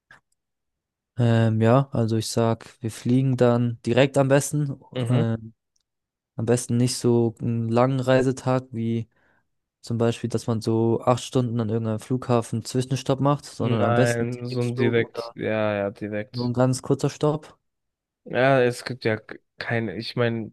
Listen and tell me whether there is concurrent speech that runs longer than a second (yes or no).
yes